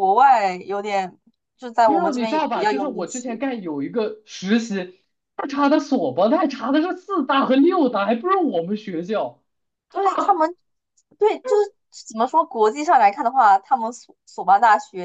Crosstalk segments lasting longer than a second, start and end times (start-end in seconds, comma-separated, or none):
1.8-3.4